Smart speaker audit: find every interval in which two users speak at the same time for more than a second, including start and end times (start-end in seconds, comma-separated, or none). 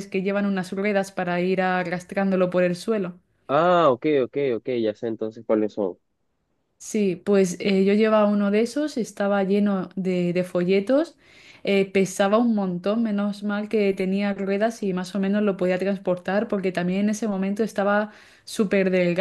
none